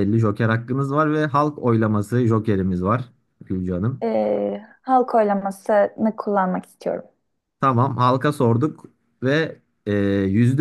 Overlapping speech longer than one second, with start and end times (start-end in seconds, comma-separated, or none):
none